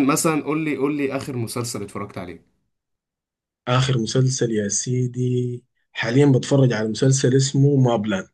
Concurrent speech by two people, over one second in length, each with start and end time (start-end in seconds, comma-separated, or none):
none